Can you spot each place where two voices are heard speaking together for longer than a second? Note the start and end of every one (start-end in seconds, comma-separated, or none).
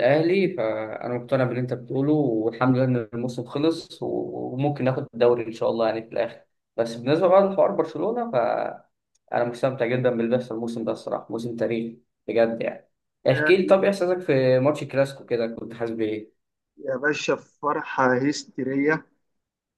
none